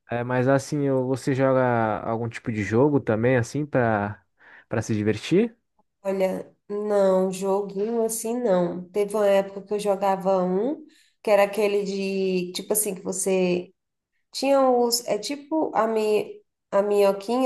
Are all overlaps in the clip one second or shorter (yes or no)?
yes